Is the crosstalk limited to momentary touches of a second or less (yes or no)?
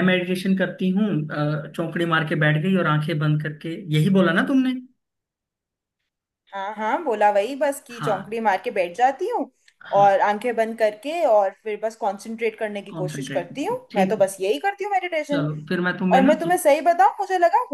no